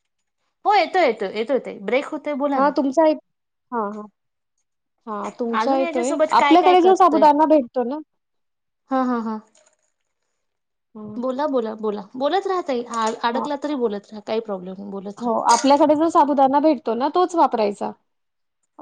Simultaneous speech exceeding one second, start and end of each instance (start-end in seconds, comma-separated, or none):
5.6-7.2